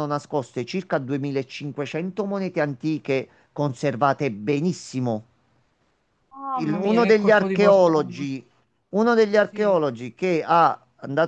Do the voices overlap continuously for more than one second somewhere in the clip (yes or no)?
yes